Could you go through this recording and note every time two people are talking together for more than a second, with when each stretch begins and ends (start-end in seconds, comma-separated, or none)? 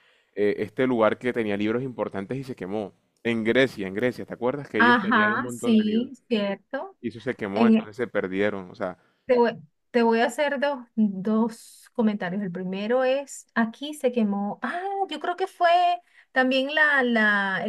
4.8-6.1